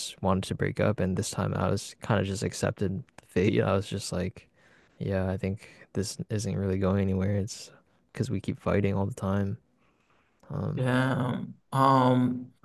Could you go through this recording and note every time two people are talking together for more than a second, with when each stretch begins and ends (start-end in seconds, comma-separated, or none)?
none